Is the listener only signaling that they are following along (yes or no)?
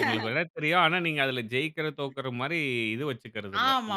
no